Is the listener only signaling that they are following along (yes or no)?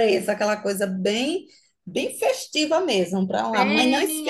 no